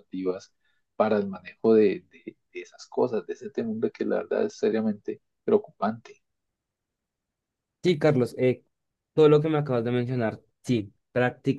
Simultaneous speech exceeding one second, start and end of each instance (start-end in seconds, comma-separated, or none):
none